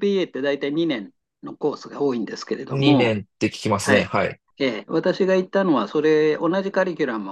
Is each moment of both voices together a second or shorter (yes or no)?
yes